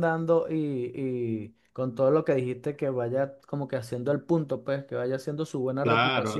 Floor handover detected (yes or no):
yes